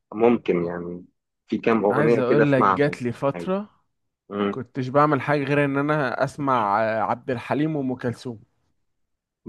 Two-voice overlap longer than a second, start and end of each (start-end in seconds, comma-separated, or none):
1.9-3.5